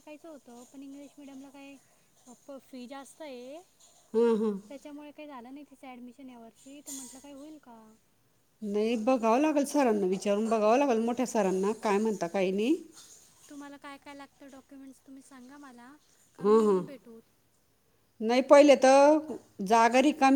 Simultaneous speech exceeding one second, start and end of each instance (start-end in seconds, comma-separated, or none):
none